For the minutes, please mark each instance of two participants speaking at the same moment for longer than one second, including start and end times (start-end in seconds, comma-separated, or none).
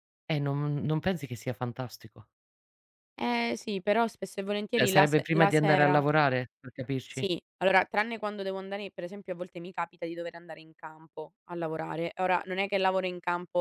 4.7-6.0